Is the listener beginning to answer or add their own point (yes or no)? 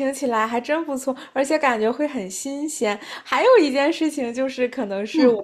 no